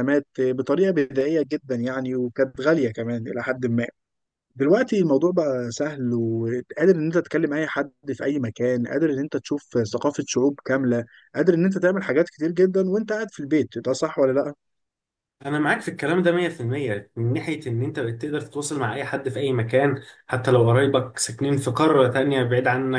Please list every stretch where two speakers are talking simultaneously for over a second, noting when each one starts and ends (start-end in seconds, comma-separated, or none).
none